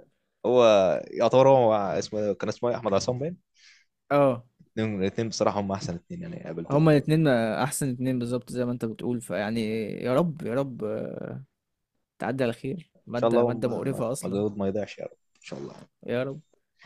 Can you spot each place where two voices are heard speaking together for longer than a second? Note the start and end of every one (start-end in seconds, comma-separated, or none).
13.2-14.4